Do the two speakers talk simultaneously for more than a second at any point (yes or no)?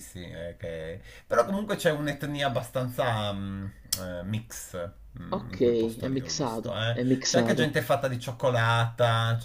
yes